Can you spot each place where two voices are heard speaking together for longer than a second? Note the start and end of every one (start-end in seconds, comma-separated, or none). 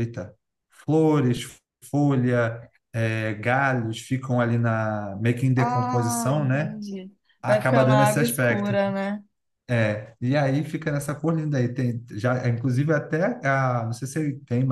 5.6-6.8, 7.4-8.8